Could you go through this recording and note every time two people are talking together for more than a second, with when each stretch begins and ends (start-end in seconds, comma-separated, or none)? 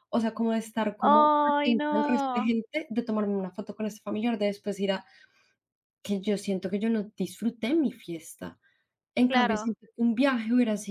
1.0-2.5